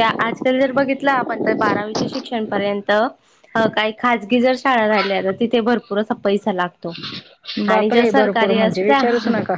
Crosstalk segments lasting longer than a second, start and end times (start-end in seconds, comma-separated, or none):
7.7-9.0